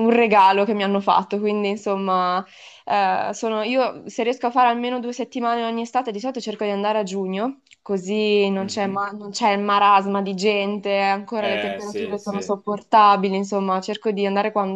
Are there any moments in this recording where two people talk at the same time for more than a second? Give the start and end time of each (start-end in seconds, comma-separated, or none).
11.4-12.6